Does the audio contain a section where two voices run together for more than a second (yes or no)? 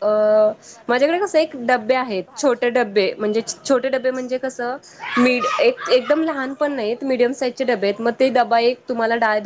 yes